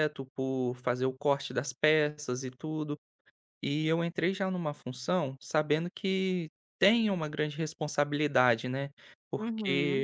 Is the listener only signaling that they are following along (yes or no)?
no